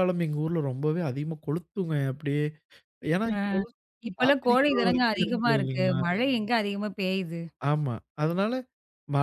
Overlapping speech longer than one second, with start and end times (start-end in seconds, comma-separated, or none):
4.2-6.0